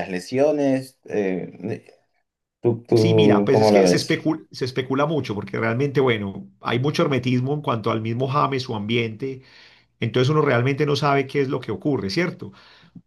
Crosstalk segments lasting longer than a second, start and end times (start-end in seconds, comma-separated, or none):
2.9-4.2